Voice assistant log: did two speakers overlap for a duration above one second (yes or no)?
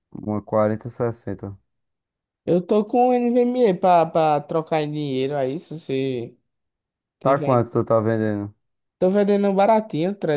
no